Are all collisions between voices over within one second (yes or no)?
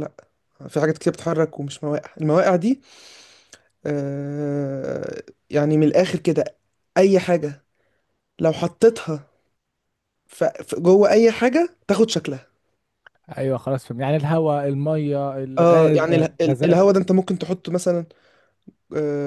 no